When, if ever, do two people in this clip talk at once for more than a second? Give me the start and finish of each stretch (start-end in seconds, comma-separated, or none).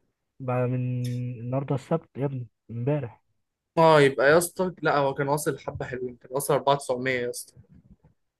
none